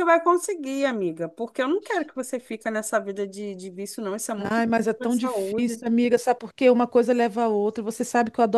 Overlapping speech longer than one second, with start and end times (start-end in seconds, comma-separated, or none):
4.4-5.8